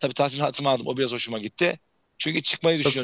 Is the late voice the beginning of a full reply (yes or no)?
no